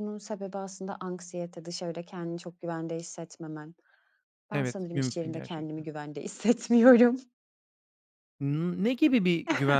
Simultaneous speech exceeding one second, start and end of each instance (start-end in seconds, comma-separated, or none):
4.5-5.8